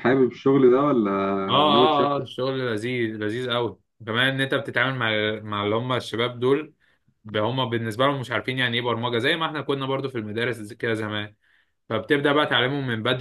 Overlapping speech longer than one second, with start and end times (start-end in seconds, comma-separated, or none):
none